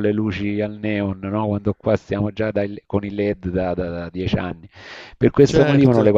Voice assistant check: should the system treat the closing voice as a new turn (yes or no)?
no